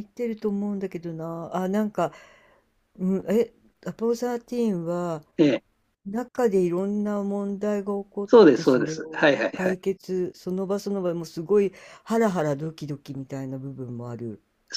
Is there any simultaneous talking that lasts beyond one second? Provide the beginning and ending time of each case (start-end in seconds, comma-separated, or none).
8.3-9.8